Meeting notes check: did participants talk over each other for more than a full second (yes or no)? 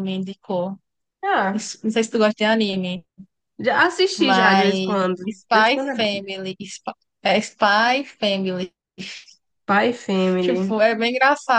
yes